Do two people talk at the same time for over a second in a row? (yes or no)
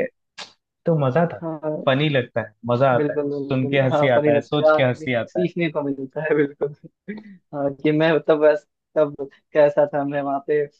yes